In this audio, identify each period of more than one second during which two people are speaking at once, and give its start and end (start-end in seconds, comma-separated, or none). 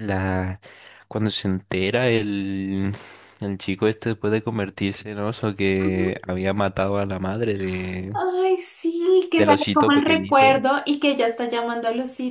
9.3-10.6